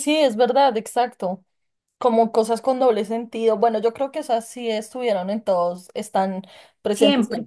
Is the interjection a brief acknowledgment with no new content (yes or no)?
yes